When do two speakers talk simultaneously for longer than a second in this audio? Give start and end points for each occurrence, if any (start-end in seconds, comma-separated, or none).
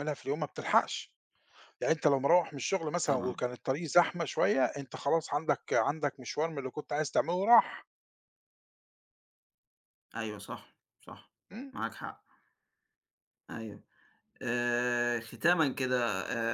none